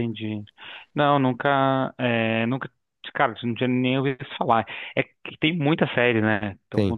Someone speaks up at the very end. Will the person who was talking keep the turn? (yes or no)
yes